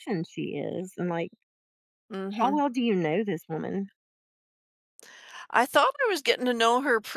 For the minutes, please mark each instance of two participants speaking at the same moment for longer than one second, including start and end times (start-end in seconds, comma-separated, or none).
none